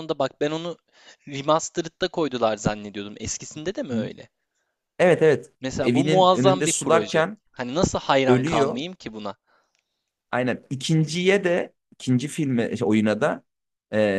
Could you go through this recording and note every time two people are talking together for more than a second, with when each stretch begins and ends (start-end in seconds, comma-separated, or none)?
5.6-7.4